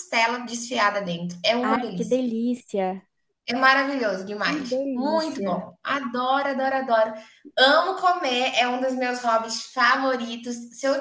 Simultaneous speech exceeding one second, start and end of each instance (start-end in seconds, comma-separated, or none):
4.4-5.7